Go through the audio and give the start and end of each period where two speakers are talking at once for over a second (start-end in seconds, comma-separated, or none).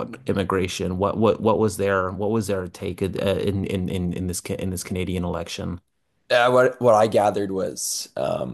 none